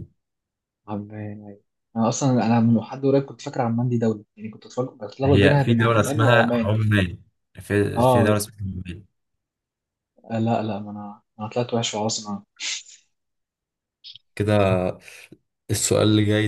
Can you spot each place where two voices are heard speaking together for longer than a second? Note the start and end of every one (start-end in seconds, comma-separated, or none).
5.2-6.8